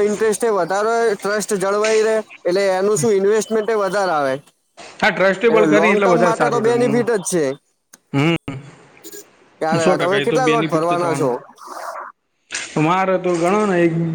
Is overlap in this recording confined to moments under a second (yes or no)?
no